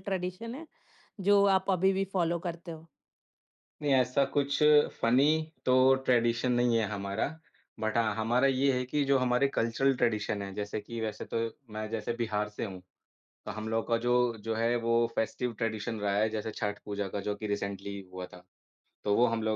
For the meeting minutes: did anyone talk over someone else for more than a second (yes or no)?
no